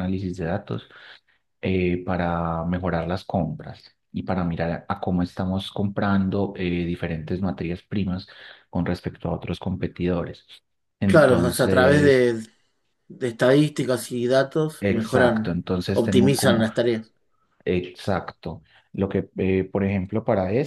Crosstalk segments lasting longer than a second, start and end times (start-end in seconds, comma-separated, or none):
11.0-12.3, 14.8-16.7